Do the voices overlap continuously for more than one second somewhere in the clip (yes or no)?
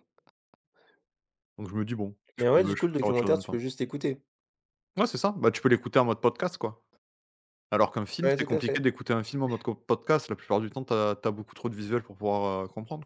yes